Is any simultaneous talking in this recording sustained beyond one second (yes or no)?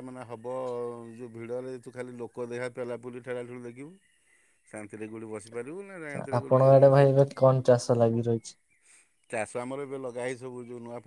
no